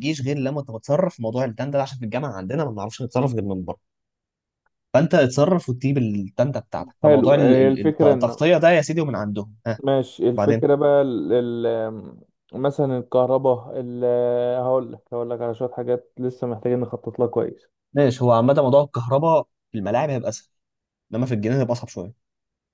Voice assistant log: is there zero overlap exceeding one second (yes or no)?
no